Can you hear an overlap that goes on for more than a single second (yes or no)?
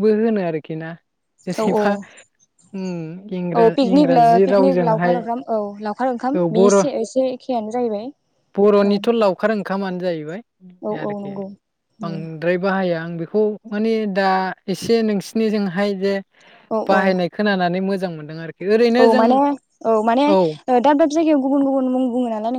yes